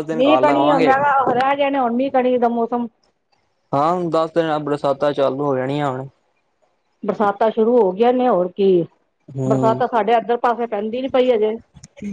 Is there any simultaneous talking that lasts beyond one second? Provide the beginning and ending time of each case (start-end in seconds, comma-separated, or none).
none